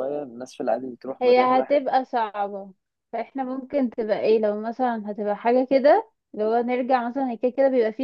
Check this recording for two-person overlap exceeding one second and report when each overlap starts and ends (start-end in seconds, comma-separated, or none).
none